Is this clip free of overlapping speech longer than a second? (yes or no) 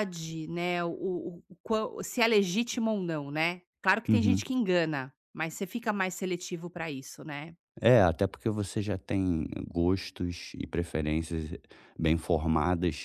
yes